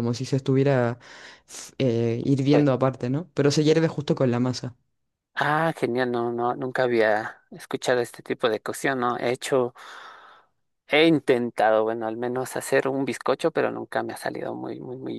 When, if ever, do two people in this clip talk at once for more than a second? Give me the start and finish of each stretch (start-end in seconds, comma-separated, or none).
none